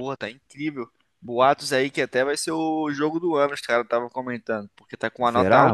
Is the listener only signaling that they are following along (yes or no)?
yes